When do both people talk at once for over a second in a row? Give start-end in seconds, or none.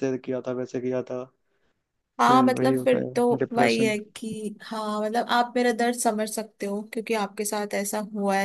2.2-3.9